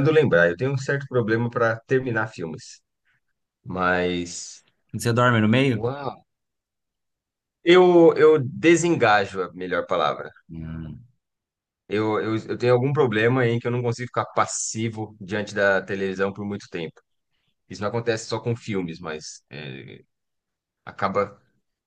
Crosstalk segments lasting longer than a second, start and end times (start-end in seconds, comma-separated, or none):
none